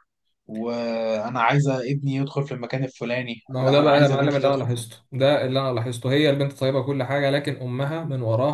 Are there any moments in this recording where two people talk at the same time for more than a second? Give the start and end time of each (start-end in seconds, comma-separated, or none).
3.5-4.8